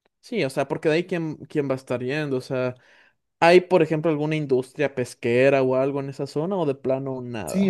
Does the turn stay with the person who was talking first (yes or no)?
no